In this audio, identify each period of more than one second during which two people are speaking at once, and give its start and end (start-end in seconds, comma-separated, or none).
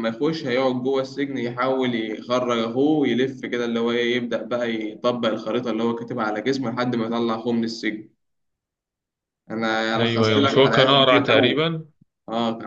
9.9-11.7